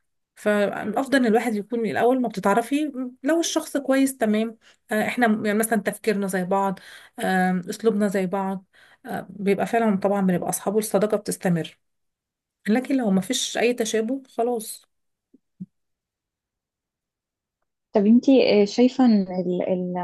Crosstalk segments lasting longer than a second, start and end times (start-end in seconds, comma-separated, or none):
none